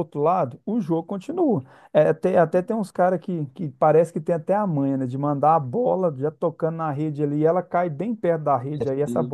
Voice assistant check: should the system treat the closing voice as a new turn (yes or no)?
no